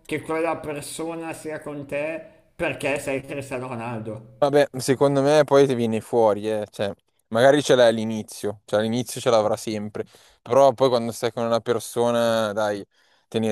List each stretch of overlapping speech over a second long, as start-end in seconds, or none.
none